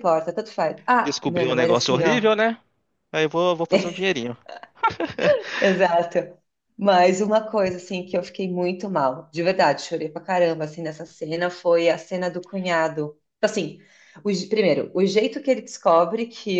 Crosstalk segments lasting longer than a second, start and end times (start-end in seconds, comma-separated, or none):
1.0-2.3